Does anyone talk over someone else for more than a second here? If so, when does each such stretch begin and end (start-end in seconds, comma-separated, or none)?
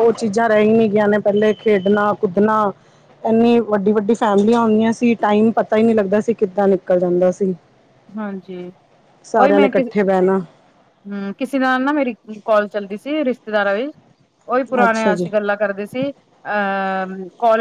none